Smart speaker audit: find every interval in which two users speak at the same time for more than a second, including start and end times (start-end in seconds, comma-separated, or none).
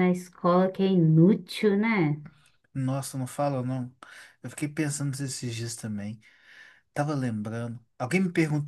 none